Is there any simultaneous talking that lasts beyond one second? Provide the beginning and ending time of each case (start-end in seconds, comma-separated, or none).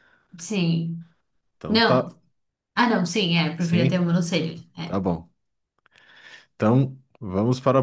none